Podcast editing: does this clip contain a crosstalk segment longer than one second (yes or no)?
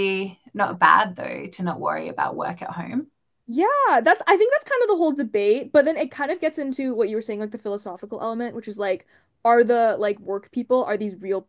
no